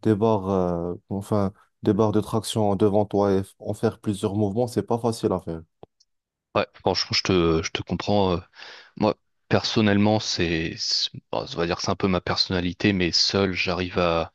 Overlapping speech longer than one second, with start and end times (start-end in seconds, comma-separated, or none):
none